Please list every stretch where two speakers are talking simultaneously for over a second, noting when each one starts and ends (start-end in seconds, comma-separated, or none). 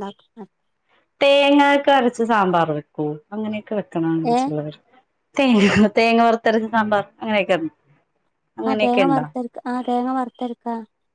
none